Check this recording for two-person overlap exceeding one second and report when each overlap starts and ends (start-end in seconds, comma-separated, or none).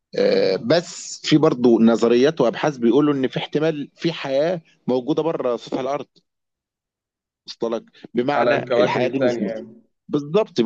8.4-9.6